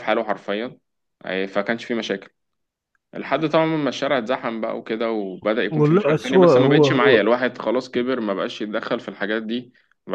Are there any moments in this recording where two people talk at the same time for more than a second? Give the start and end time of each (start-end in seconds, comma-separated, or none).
5.7-7.3